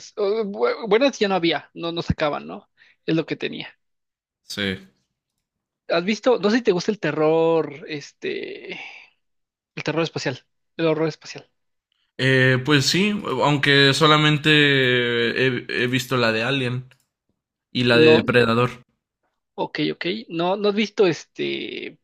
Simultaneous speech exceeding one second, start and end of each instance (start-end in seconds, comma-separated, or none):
none